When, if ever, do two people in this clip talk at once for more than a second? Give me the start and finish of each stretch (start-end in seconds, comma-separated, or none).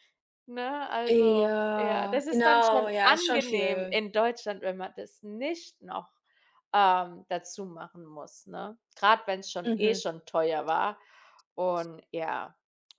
1.1-4.0